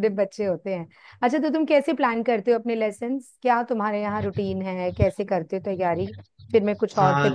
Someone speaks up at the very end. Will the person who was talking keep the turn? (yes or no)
no